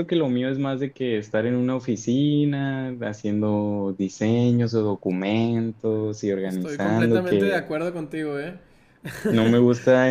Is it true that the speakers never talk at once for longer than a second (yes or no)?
no